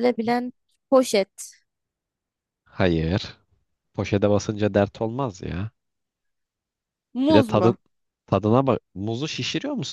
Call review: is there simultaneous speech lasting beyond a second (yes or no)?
no